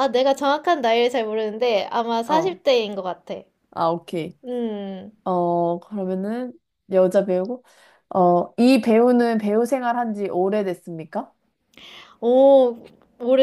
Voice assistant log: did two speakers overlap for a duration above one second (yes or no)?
no